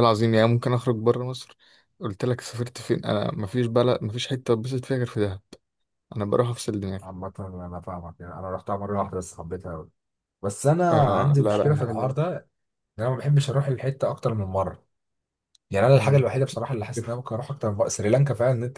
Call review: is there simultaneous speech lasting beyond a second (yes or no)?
yes